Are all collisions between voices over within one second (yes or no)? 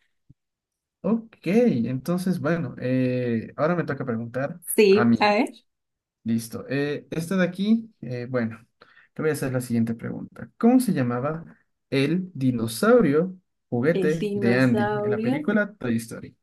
no